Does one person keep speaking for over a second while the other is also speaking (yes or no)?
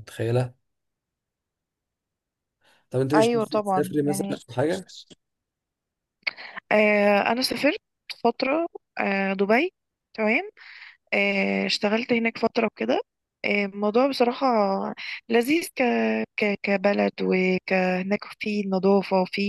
yes